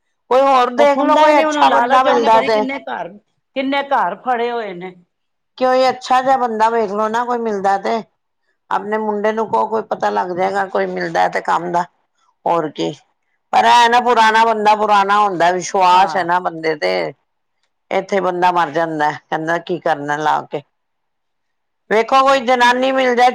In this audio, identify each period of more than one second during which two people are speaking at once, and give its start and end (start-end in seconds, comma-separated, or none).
0.8-2.6